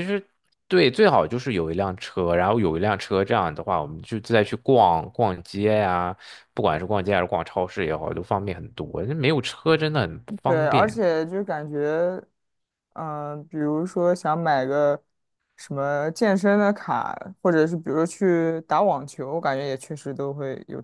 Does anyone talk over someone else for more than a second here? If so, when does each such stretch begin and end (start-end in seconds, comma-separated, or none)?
none